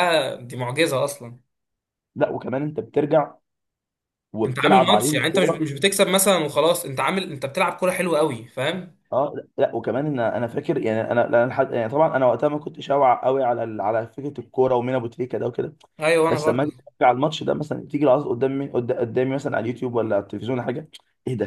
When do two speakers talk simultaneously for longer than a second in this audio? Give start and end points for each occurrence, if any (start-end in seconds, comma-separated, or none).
4.4-5.7